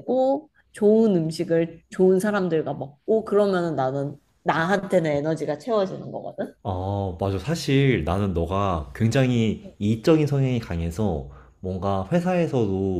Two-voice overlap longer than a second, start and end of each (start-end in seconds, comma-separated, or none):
none